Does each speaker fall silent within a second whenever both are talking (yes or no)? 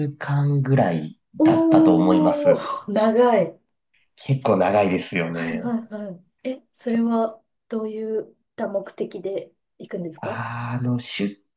no